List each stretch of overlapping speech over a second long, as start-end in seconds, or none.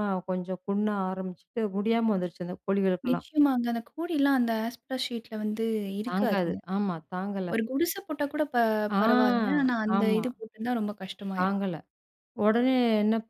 none